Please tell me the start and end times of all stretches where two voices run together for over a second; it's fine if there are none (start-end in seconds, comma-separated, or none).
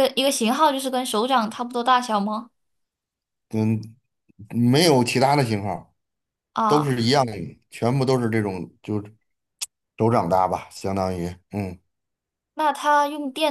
none